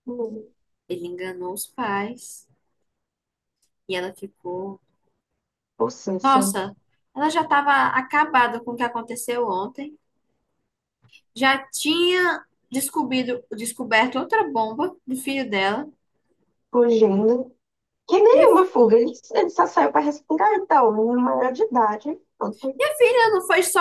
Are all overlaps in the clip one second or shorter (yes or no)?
yes